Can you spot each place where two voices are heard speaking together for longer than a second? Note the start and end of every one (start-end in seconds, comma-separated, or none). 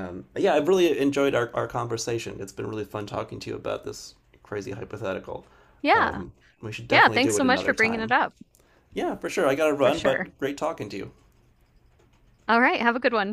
6.9-8.1